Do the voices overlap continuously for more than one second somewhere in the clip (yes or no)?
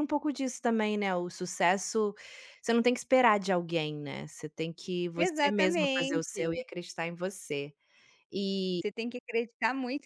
yes